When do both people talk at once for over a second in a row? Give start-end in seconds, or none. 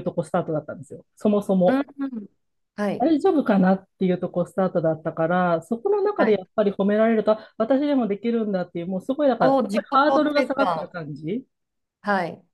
9.4-10.9